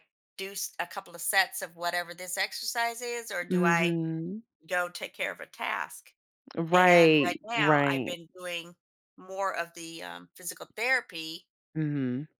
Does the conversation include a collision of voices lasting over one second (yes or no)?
yes